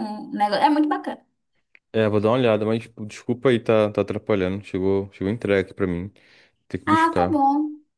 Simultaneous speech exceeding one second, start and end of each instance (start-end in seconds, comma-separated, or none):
none